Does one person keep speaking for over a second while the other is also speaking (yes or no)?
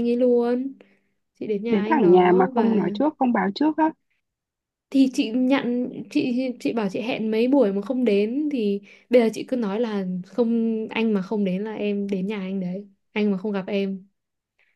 yes